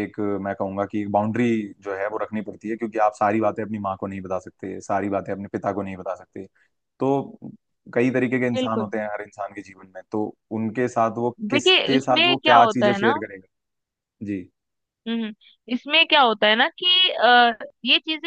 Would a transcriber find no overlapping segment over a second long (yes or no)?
no